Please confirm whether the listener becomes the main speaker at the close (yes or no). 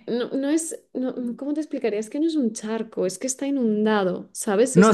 yes